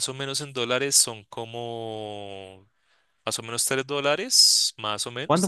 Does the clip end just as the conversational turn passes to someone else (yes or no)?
no